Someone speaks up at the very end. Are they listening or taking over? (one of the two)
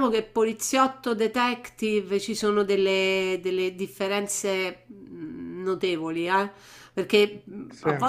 listening